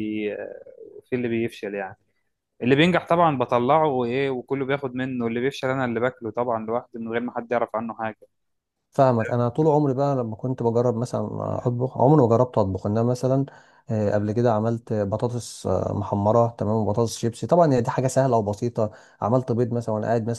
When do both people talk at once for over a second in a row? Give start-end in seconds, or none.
none